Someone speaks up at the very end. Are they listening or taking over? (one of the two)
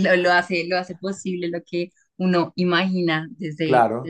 taking over